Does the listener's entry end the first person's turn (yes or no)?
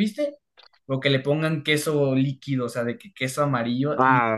yes